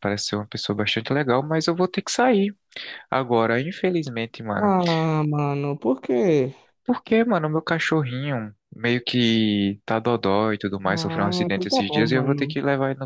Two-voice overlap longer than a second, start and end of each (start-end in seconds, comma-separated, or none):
10.8-12.6